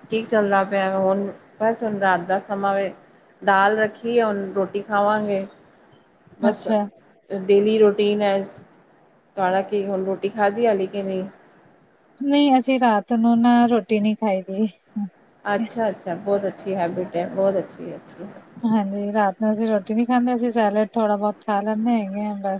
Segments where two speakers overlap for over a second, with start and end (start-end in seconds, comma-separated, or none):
none